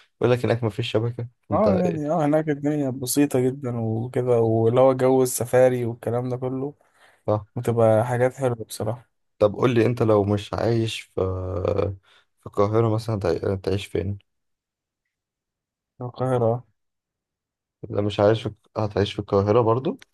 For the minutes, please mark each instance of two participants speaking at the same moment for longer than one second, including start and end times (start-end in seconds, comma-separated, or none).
none